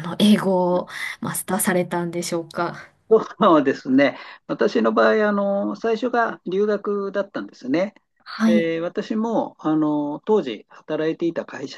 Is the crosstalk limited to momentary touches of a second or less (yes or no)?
yes